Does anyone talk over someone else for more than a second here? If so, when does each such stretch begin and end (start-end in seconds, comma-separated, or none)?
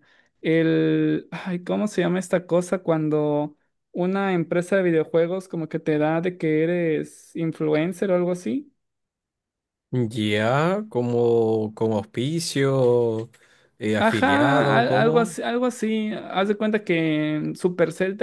14.0-15.4